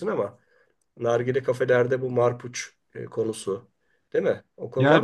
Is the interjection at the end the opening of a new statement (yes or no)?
yes